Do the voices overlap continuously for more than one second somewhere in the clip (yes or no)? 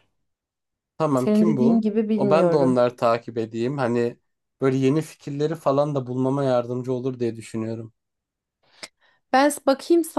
yes